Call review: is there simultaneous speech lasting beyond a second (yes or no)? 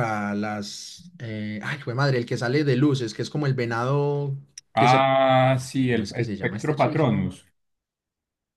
yes